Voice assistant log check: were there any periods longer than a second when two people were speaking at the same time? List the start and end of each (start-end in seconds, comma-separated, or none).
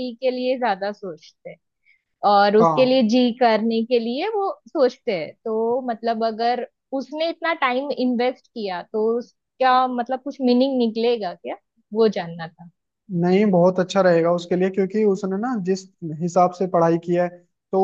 none